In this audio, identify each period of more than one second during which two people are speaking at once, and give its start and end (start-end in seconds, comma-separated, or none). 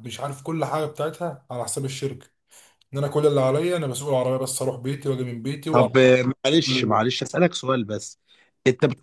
none